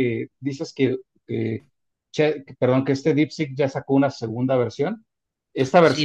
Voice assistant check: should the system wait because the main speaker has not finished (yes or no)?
yes